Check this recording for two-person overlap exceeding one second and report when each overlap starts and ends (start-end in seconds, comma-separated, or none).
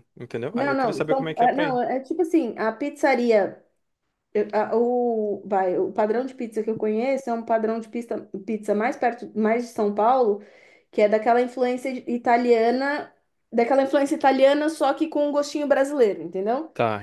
0.5-1.8